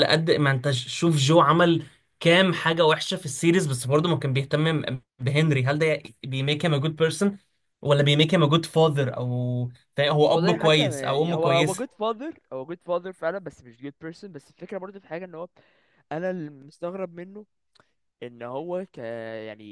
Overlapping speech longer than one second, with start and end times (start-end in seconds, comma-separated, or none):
10.3-11.8